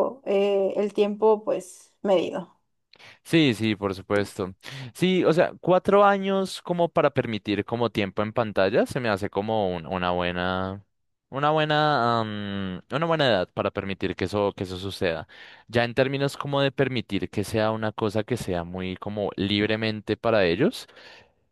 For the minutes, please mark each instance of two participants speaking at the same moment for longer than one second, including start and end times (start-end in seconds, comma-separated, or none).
none